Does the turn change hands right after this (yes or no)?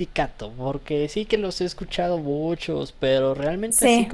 no